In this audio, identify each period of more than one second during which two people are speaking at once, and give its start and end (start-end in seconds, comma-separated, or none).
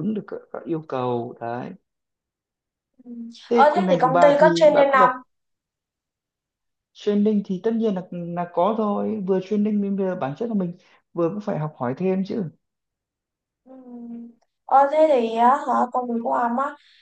3.5-5.1